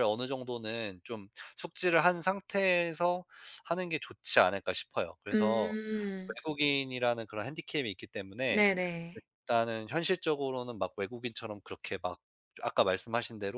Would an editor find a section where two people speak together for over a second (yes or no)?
no